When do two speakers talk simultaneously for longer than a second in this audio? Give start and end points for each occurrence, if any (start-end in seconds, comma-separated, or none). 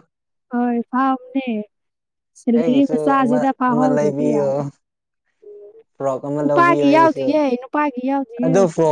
2.6-4.5